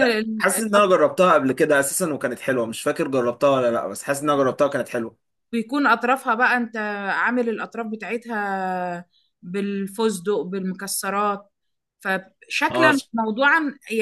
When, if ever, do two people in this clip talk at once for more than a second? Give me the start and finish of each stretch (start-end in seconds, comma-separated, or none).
none